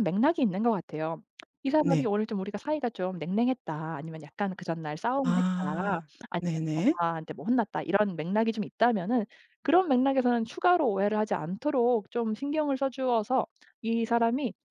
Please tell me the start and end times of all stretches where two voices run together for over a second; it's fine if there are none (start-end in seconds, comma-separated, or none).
5.2-7.0